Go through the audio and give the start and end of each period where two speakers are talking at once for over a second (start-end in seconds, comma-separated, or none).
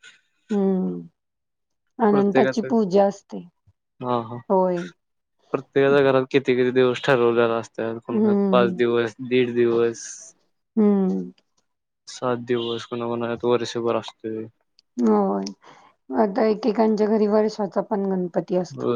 none